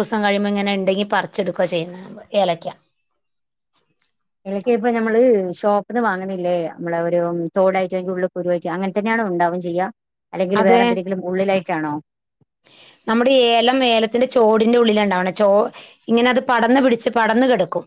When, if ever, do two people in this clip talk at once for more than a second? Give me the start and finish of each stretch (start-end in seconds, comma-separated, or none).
none